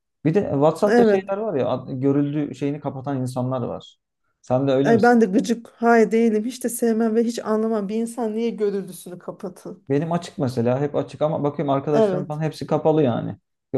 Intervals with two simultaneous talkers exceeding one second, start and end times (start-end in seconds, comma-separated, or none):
none